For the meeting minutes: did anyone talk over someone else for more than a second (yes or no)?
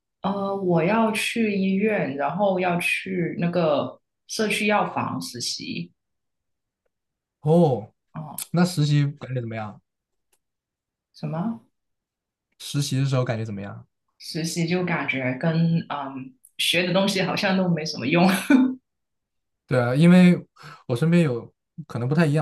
no